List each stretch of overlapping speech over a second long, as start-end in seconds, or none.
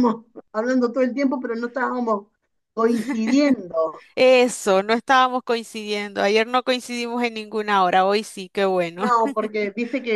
none